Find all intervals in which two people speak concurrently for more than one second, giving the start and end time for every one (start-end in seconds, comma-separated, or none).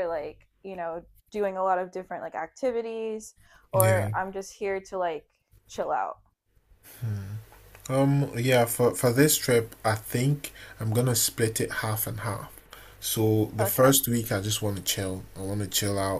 none